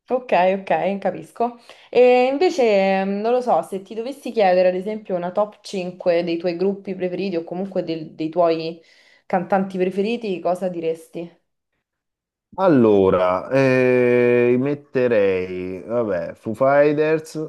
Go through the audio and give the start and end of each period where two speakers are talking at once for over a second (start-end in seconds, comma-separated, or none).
none